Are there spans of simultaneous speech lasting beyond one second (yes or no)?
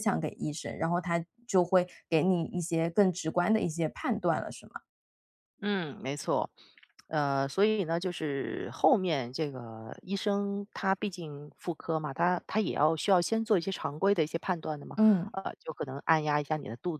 no